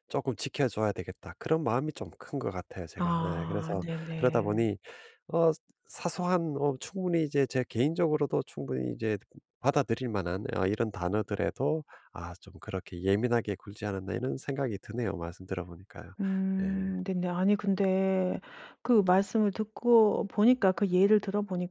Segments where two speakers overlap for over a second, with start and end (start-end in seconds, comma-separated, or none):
3.0-4.7